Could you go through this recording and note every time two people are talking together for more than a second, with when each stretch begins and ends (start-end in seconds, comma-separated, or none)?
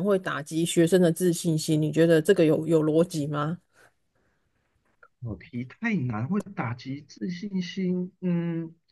none